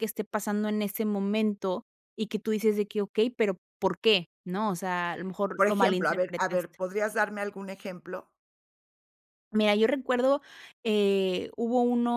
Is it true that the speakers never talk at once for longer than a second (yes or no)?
no